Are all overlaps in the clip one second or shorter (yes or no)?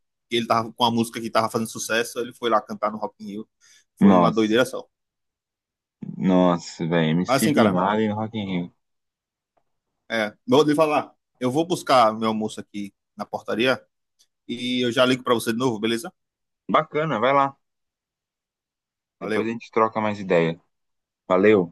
yes